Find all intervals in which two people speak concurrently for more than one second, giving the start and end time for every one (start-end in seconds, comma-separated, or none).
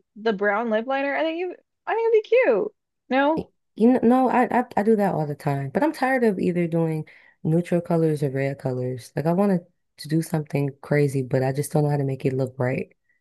none